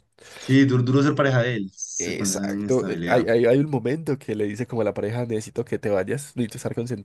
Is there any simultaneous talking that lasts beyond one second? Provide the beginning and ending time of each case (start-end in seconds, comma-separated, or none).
2.0-3.3